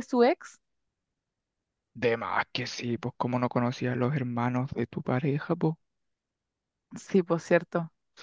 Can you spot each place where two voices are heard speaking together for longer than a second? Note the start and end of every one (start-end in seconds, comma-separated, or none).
none